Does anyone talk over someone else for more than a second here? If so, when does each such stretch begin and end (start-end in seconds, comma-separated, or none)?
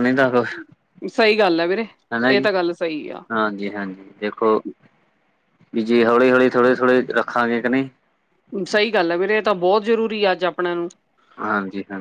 none